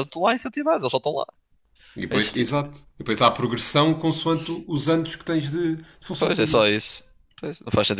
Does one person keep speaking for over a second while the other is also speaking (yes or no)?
no